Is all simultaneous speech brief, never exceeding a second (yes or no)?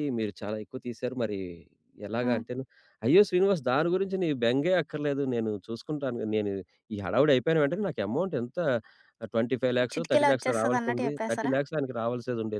no